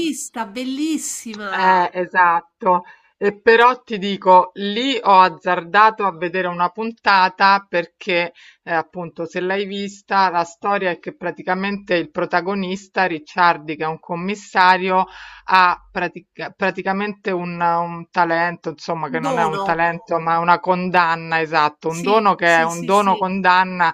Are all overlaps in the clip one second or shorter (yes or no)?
no